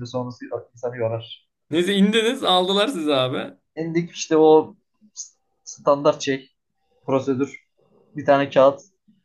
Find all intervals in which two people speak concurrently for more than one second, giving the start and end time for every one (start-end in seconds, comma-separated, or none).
none